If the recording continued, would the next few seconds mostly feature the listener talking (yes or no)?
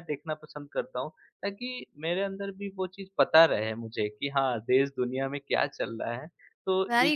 yes